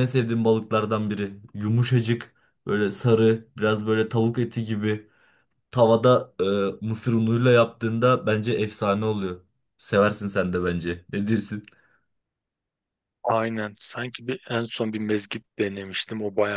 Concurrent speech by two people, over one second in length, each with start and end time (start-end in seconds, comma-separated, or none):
none